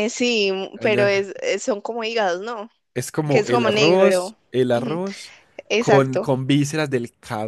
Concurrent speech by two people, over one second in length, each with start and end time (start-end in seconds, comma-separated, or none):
3.3-5.0